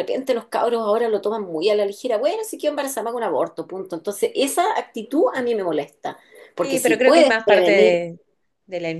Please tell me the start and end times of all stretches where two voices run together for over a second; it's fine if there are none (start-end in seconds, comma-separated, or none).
6.6-8.0